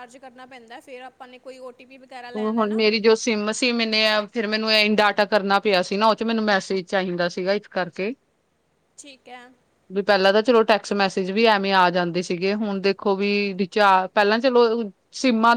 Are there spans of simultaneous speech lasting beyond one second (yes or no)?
no